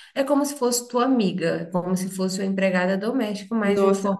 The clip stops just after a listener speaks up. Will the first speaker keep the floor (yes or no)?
no